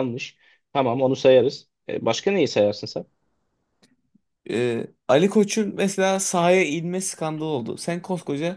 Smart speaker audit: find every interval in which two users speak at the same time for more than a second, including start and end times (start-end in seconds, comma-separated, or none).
none